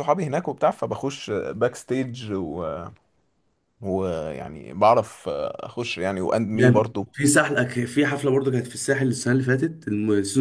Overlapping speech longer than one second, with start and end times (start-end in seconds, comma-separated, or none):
none